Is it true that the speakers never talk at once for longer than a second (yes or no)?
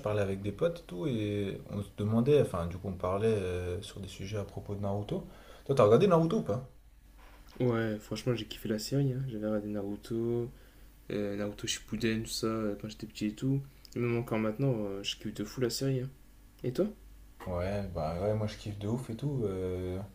yes